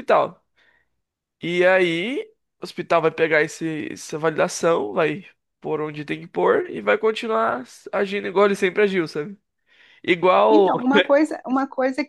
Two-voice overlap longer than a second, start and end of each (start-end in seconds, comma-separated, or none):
none